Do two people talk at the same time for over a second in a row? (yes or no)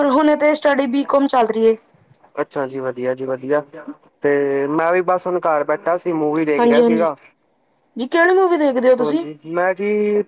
no